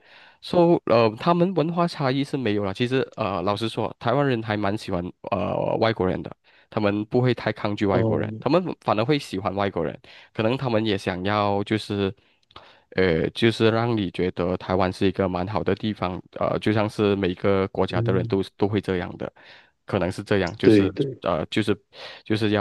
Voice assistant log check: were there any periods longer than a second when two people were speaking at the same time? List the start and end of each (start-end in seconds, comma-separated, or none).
none